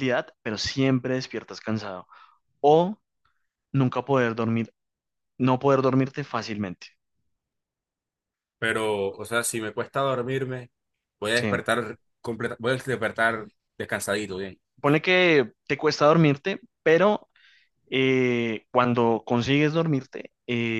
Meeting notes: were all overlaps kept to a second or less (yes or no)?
yes